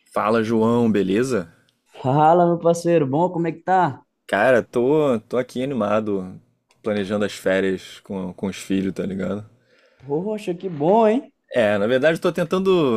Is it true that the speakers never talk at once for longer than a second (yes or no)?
yes